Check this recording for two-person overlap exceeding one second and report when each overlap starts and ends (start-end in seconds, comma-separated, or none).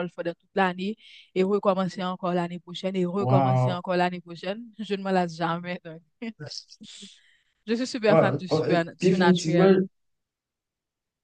8.1-9.7